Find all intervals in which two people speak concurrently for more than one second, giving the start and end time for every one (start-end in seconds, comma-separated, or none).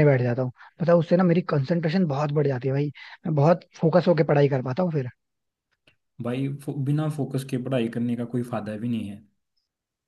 none